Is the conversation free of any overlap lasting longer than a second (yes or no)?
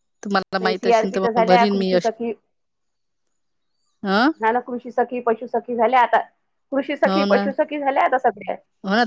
no